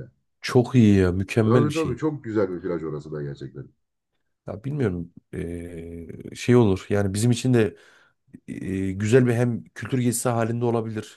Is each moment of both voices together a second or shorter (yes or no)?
yes